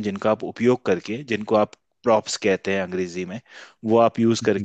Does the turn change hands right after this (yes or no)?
no